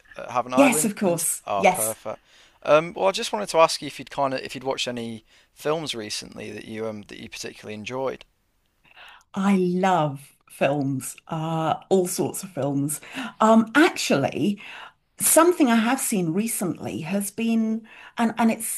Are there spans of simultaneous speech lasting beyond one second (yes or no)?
yes